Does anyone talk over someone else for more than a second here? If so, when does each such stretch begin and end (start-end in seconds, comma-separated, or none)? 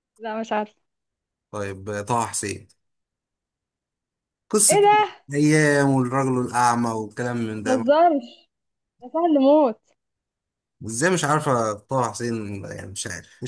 none